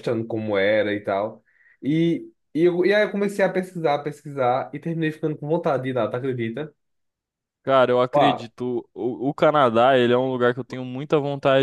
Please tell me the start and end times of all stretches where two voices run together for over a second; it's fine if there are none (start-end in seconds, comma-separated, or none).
none